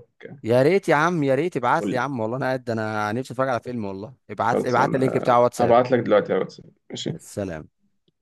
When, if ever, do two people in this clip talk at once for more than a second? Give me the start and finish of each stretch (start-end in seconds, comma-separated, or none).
4.5-5.8